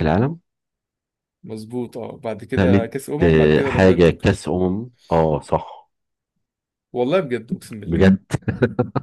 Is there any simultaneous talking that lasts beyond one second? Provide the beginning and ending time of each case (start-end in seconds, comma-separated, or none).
2.5-4.3